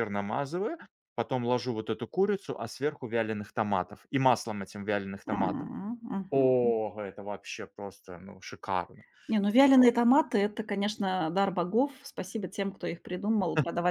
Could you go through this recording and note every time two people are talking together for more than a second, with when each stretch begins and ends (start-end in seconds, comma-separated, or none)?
none